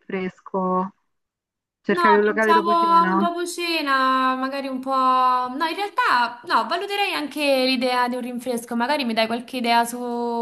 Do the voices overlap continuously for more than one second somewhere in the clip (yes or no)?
yes